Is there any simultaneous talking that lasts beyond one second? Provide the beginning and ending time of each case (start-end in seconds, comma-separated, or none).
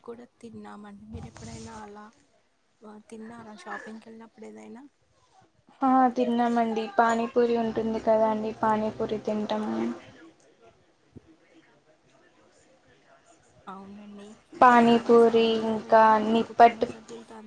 14.7-16.9